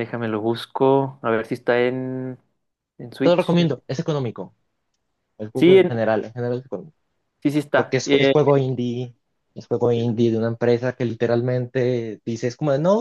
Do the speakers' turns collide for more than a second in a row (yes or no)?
no